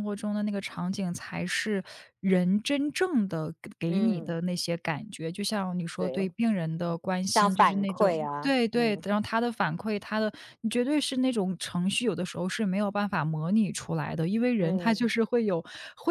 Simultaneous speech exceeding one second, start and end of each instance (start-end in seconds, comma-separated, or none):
7.2-9.0